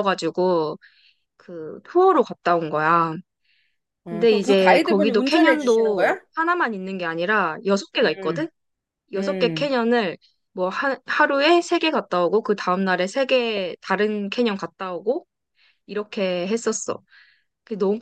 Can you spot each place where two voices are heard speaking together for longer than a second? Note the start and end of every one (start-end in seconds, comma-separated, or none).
4.1-6.2